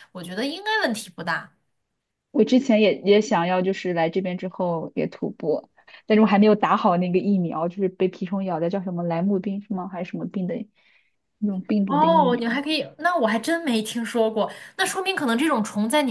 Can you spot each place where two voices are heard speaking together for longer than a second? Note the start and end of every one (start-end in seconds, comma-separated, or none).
none